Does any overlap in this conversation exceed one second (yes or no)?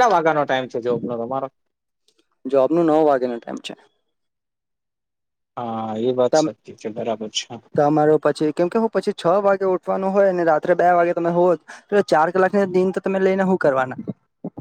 no